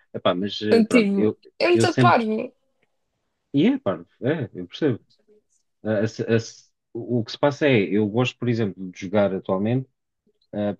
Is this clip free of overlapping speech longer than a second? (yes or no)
no